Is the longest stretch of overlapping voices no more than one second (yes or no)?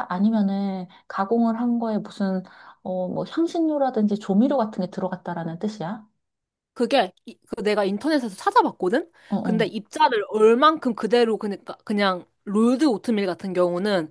yes